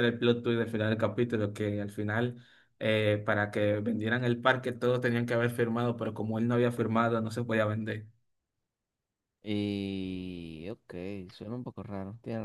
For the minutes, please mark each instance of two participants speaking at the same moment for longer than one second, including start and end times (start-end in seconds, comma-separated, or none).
none